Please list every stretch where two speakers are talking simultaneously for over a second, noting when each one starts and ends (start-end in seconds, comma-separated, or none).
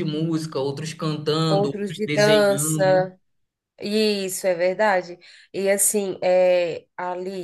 1.5-3.1